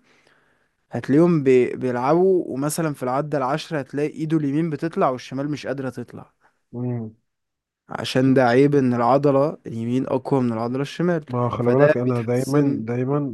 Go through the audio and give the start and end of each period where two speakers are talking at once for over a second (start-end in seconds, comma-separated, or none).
11.3-12.8